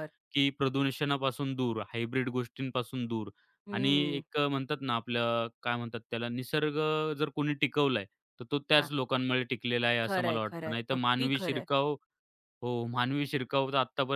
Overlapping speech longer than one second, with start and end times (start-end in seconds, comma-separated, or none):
10.0-11.7